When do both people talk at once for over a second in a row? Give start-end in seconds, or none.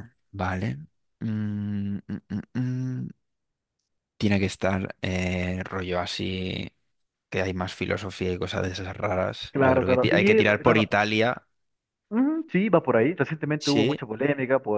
9.5-10.9